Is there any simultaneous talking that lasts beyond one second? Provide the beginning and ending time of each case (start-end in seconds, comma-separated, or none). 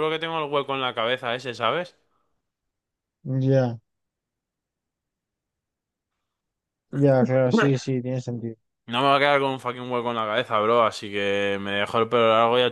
none